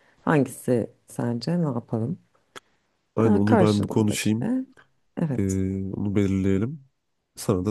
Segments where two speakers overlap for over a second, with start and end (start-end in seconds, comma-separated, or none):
3.2-4.5